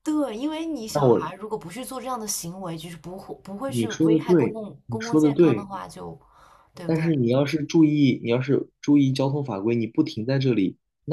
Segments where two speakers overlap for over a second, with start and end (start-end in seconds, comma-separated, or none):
3.7-5.7